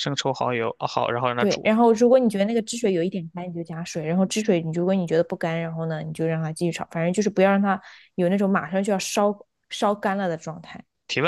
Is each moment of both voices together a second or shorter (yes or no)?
yes